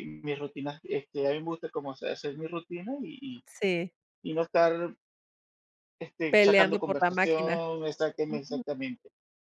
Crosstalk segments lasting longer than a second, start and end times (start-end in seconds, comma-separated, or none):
6.3-7.6